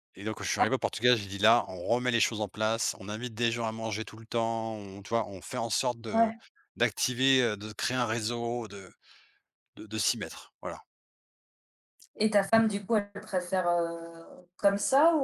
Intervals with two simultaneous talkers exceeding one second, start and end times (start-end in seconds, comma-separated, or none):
none